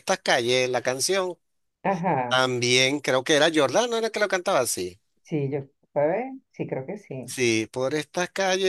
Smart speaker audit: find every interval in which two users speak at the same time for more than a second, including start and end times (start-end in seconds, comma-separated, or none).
none